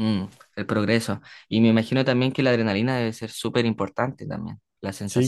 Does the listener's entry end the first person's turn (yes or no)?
yes